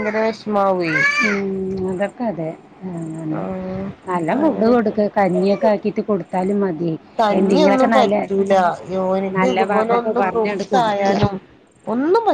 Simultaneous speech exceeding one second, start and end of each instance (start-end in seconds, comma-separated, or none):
9.4-11.1